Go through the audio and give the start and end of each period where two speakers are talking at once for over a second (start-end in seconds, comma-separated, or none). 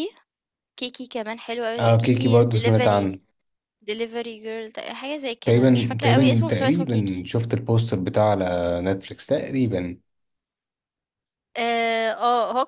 1.8-3.1, 5.4-7.3